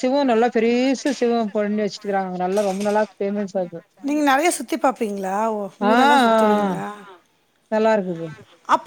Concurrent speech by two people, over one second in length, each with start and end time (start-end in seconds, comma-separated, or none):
none